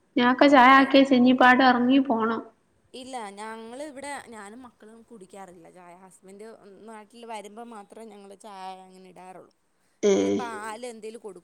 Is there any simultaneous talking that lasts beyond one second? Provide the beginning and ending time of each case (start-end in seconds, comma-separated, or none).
none